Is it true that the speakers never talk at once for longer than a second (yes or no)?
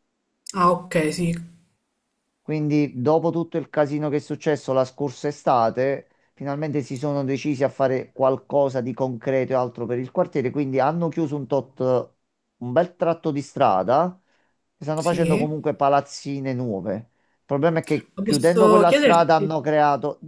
no